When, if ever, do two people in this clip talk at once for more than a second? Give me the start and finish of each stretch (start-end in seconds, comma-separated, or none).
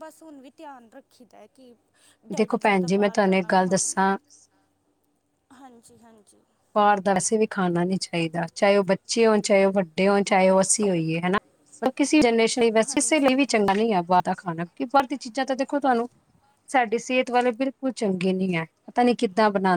2.4-3.9